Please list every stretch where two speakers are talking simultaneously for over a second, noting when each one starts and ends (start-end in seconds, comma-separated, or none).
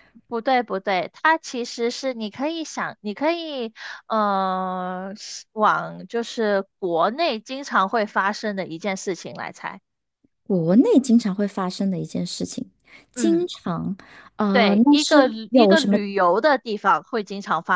14.5-16.0